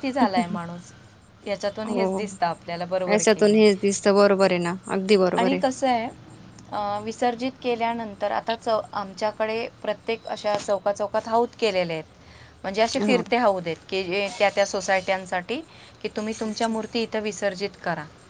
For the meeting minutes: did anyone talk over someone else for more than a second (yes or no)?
no